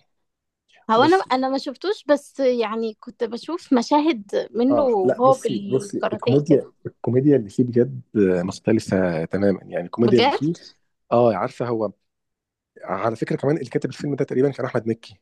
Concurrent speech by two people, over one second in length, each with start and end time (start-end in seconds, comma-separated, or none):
4.7-6.7